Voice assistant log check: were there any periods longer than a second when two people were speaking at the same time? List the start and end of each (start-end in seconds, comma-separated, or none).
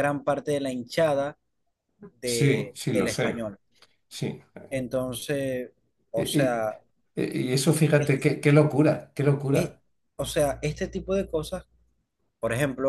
2.2-3.5